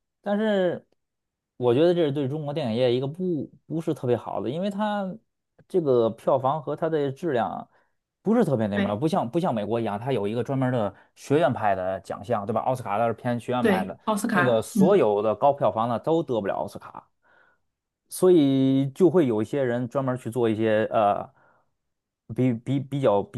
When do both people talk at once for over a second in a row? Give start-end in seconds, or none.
13.6-15.1